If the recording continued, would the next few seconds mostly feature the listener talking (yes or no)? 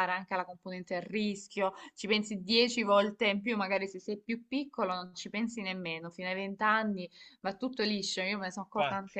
no